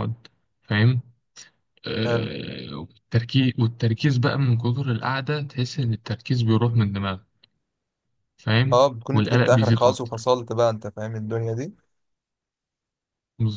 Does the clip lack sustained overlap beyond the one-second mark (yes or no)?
no